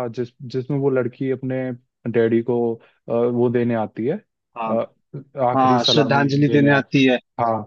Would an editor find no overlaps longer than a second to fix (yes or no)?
no